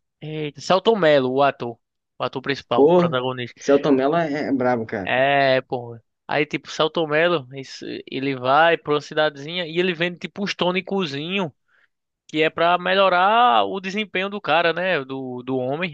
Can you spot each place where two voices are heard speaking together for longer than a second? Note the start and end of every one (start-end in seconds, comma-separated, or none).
none